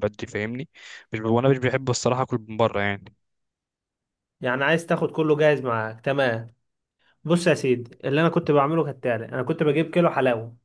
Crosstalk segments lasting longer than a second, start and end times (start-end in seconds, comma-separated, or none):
none